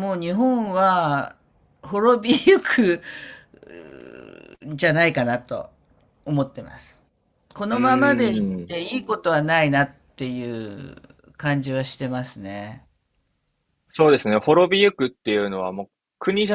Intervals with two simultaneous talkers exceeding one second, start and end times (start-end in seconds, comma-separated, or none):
none